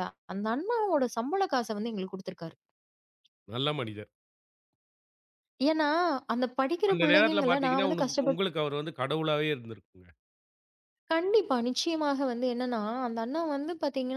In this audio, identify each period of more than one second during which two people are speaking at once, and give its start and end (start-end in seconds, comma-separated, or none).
6.9-8.4